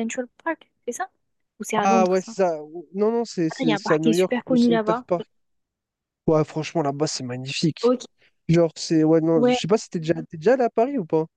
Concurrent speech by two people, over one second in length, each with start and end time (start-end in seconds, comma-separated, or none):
3.5-5.0